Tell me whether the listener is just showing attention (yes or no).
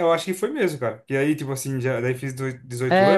no